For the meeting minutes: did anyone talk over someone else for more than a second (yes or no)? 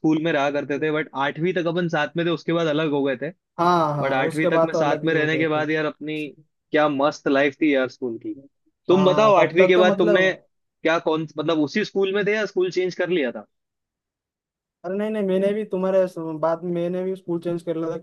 yes